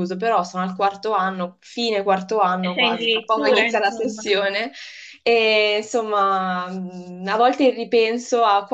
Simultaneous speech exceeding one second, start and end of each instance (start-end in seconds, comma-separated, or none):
2.6-4.2